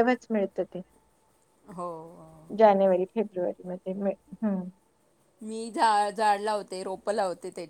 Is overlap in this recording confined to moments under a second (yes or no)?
yes